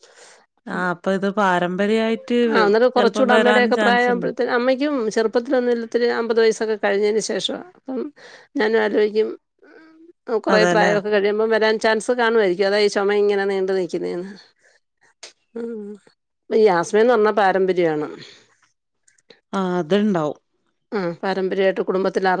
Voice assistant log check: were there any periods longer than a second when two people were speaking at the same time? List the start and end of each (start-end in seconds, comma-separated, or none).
3.0-4.3